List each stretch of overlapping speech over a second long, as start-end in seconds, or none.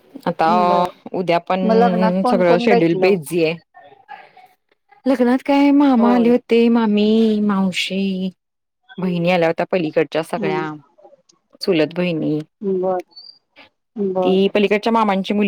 1.7-3.2